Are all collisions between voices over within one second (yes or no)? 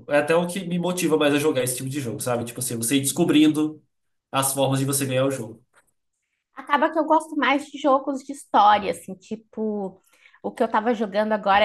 yes